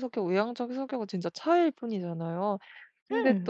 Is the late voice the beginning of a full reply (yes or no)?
no